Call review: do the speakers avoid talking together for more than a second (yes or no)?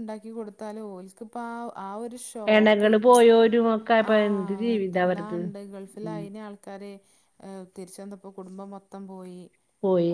yes